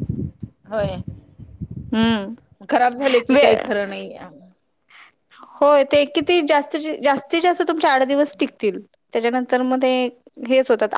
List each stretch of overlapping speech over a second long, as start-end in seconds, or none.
none